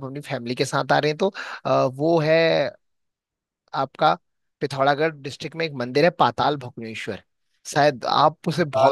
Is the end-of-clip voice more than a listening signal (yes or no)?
no